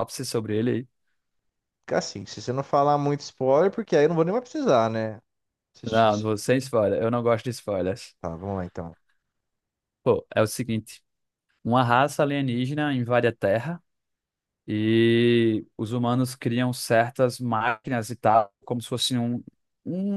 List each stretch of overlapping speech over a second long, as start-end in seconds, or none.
none